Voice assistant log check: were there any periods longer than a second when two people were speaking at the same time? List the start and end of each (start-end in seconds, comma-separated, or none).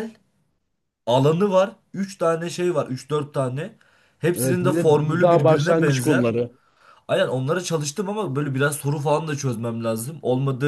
4.4-6.3